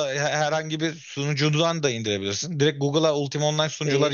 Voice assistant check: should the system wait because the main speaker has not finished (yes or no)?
yes